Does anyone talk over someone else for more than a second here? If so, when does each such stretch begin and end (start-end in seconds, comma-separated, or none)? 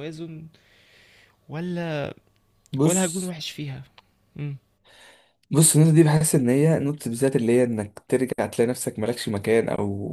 none